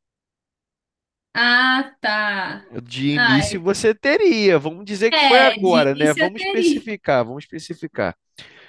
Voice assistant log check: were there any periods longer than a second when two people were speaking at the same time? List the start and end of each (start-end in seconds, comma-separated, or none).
5.1-6.9